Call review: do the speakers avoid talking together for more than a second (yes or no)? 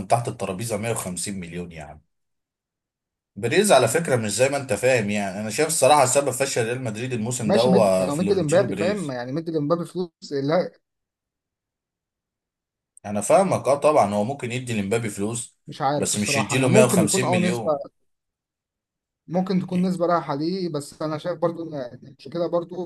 no